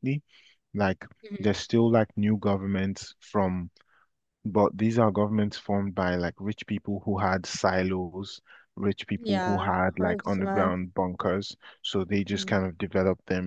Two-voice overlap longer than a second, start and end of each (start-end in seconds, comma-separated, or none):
9.2-10.7